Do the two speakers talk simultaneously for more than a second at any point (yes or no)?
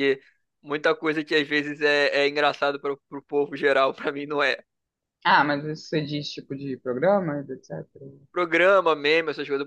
no